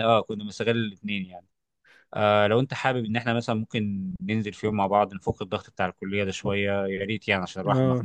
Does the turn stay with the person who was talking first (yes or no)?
no